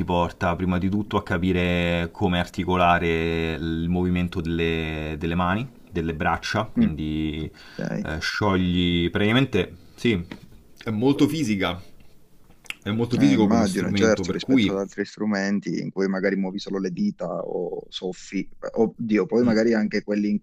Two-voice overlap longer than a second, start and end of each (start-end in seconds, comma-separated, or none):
13.1-14.9